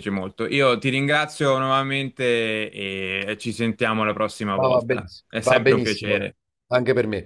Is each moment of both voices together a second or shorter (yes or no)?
no